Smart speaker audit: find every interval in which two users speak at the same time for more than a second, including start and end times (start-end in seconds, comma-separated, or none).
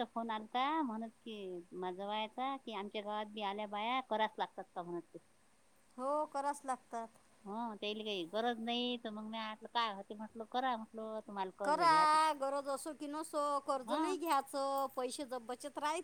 none